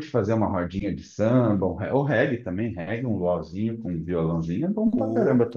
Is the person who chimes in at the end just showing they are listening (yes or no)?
no